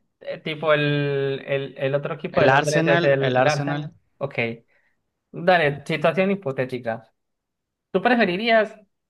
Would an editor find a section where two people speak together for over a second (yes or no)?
yes